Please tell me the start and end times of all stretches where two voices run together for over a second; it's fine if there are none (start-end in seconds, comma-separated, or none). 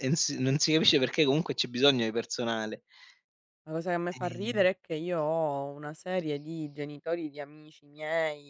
none